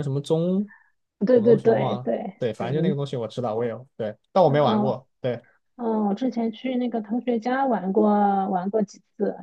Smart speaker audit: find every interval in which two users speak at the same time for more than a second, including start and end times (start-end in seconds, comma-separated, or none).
1.3-3.0